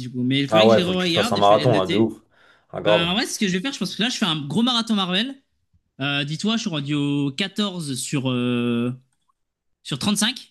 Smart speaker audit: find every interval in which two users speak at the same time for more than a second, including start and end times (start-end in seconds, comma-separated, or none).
0.5-2.1